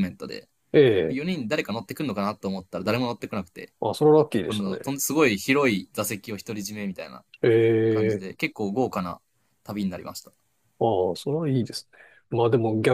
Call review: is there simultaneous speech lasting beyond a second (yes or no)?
no